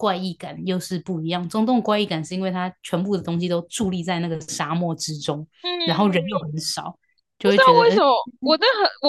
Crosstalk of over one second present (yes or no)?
no